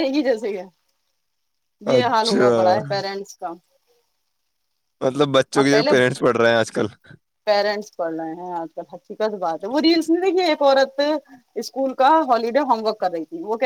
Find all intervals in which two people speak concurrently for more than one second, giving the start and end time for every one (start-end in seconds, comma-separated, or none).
none